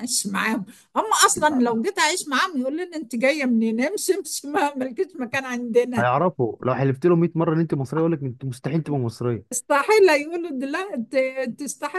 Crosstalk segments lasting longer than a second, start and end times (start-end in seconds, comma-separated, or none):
none